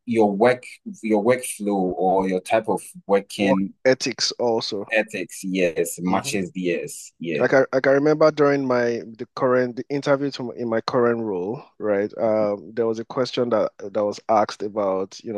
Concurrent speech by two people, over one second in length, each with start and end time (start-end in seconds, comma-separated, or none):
none